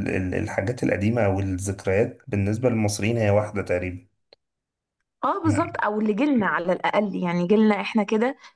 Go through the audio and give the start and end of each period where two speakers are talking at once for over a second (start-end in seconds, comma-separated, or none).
none